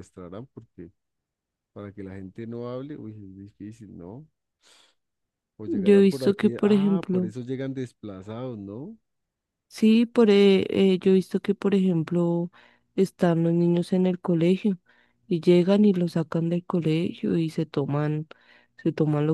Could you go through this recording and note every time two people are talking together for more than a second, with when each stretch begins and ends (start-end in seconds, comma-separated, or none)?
5.7-7.3